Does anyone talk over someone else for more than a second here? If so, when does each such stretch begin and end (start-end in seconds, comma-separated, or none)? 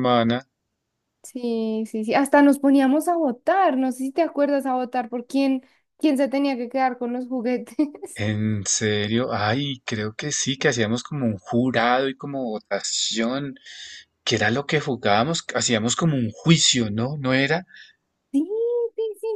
none